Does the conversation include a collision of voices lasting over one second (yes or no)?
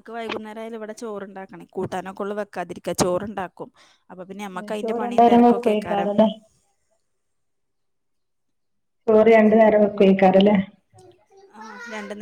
yes